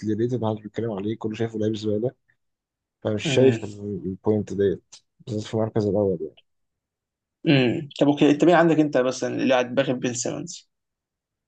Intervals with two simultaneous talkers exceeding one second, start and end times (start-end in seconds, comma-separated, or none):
none